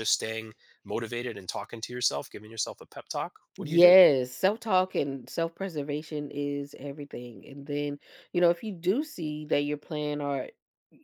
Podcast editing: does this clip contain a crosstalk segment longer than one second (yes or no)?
no